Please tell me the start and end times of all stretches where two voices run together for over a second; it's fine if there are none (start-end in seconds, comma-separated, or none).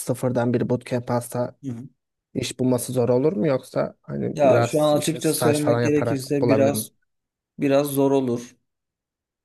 4.3-6.9